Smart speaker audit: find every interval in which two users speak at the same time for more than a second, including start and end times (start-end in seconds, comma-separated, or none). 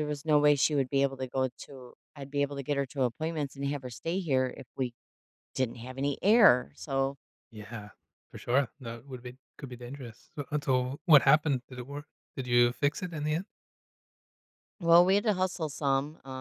none